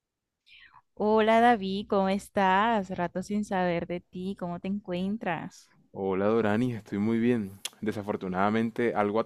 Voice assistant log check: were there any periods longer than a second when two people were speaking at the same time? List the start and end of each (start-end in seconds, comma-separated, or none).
none